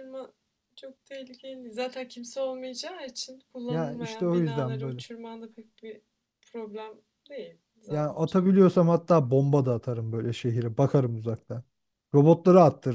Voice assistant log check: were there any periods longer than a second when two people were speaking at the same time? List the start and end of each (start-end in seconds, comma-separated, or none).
3.7-5.0